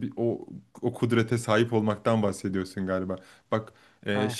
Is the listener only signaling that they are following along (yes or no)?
yes